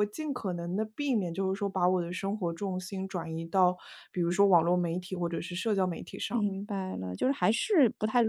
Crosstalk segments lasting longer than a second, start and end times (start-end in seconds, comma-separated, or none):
none